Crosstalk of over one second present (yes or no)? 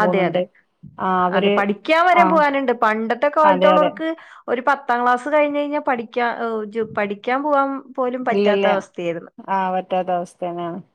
no